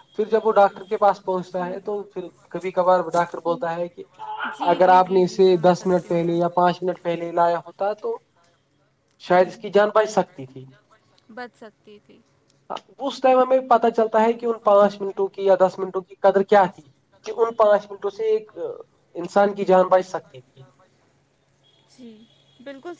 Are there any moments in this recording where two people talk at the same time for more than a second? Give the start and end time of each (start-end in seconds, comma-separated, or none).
4.7-6.3